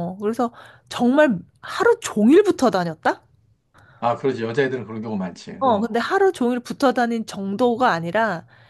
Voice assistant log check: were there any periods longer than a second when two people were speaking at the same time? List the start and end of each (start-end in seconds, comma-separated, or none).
none